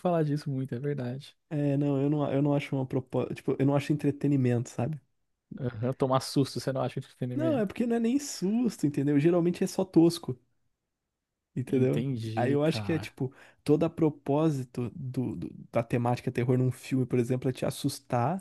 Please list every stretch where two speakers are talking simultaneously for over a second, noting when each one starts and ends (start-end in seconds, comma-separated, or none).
11.7-13.1